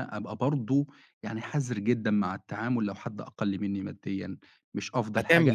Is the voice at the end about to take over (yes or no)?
yes